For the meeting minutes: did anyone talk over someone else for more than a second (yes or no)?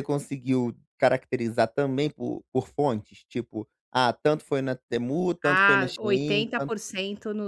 yes